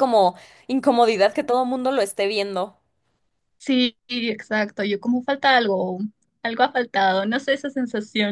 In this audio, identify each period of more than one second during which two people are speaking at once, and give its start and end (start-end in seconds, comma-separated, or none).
none